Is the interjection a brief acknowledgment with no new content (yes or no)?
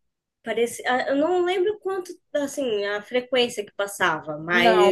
yes